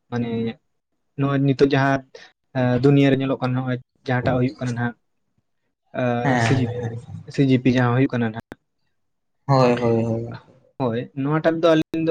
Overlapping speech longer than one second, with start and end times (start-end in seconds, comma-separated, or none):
none